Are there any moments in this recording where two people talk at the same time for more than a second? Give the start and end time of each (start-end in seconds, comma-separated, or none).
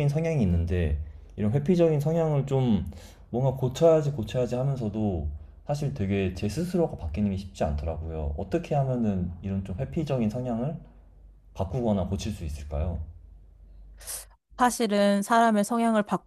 none